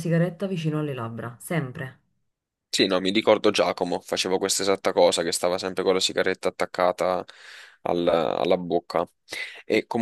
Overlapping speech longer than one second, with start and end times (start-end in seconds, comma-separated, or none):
none